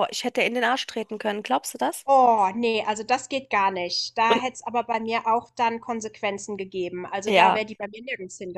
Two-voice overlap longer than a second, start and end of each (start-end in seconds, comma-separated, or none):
none